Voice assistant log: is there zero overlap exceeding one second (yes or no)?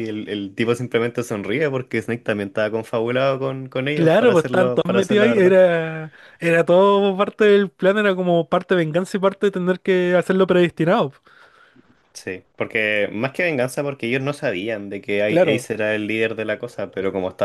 no